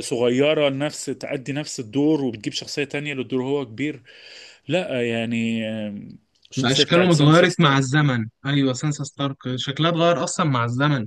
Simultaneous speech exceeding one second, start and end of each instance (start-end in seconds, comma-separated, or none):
6.6-7.9